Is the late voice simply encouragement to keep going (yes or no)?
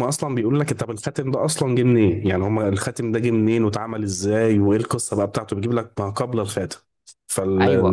no